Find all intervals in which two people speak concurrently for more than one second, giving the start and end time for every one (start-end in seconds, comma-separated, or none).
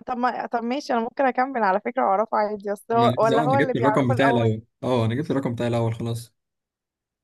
2.9-4.5